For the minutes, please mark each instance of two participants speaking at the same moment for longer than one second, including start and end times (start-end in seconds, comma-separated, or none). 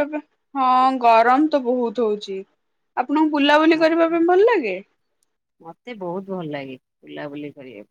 none